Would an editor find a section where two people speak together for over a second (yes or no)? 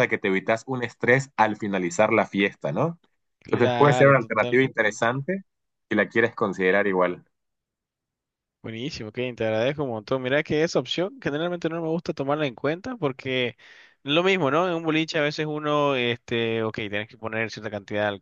yes